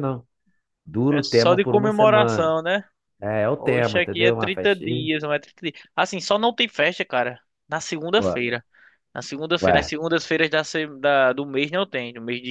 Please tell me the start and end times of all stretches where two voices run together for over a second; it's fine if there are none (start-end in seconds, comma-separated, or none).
1.1-2.5, 3.6-5.1